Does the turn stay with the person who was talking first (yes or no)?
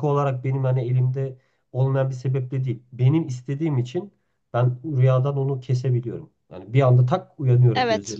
yes